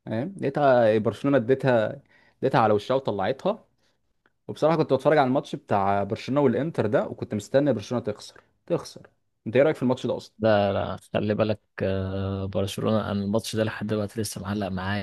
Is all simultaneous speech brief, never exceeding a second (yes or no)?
yes